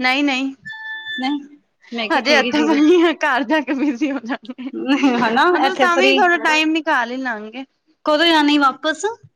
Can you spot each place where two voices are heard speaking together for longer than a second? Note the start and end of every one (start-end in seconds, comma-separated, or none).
4.6-6.2